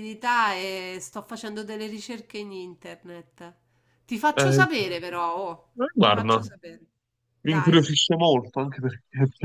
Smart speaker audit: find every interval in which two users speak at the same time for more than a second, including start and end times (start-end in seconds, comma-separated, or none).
none